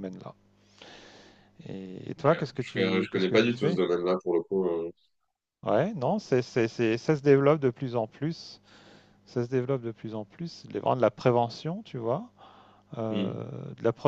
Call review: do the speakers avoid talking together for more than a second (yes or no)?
no